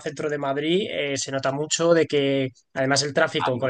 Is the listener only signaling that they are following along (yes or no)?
yes